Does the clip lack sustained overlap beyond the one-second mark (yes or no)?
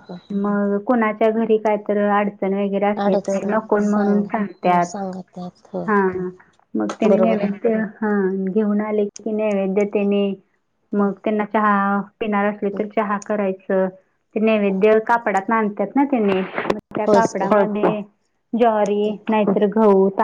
no